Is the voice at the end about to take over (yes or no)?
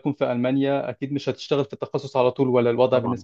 yes